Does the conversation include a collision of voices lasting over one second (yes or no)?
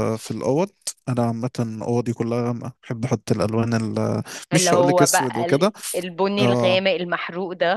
yes